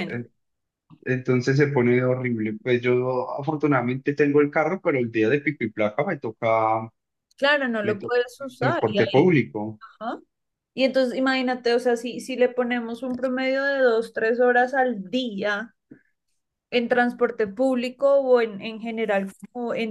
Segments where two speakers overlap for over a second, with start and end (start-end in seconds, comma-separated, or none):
7.8-9.3